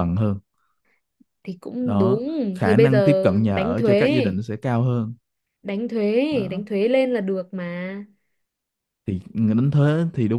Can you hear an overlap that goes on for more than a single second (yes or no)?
yes